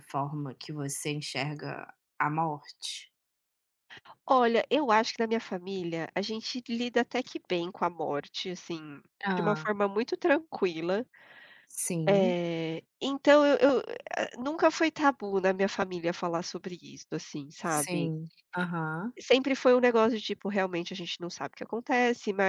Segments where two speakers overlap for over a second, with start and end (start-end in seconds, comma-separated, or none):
none